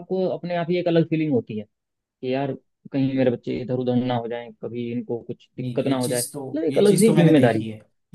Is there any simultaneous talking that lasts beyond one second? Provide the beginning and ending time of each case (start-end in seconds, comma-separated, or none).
5.6-7.7